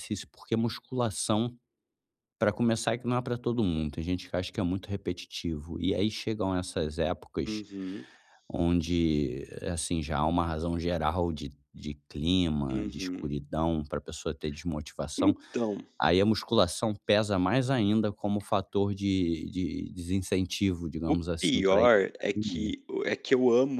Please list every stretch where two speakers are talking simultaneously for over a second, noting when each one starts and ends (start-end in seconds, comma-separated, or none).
21.1-22.7